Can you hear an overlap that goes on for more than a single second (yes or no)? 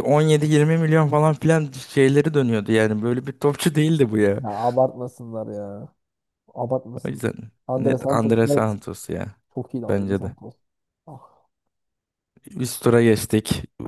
yes